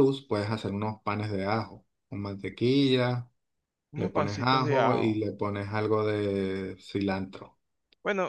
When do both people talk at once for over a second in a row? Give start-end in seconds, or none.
4.0-5.2